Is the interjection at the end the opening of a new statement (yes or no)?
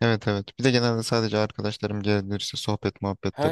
yes